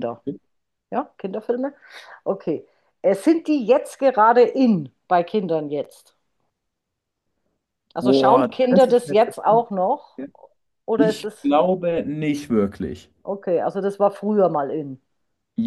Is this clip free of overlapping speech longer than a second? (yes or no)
no